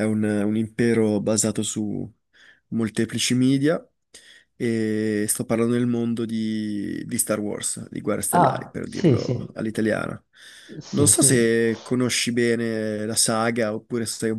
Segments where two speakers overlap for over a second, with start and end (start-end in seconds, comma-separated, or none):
8.3-9.6